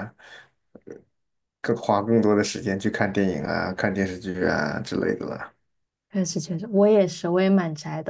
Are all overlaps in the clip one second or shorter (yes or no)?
yes